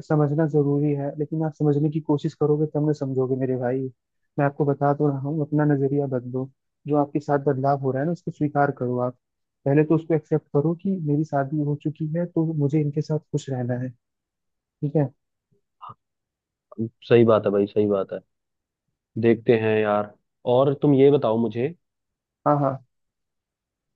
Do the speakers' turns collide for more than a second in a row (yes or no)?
no